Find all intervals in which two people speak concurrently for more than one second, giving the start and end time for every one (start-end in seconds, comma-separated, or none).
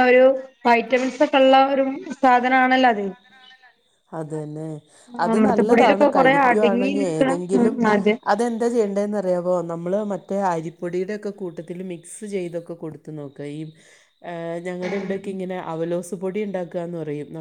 5.3-7.8